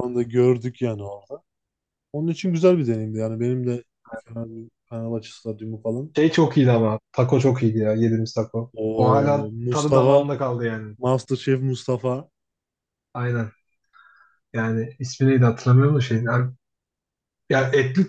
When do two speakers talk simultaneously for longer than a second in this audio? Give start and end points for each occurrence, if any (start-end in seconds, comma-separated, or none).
8.8-10.3